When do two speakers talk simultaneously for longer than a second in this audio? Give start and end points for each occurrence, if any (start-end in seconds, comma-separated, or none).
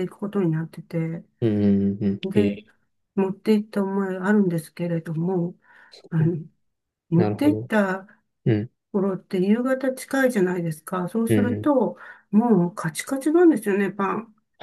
none